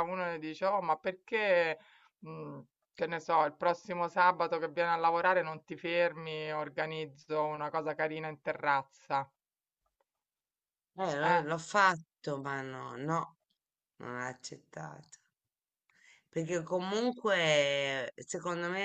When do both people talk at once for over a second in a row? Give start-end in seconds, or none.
none